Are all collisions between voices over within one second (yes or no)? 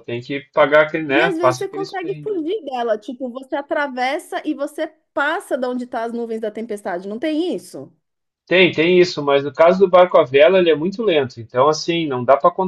no